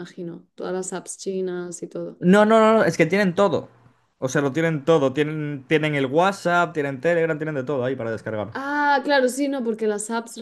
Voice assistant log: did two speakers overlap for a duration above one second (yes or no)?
no